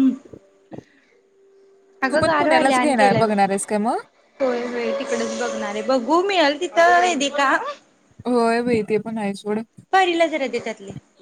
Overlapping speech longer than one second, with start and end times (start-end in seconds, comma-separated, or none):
2.1-4.0